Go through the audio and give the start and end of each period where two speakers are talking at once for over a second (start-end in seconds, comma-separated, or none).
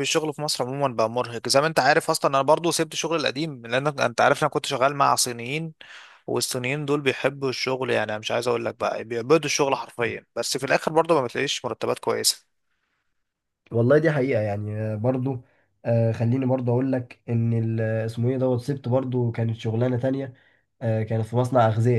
none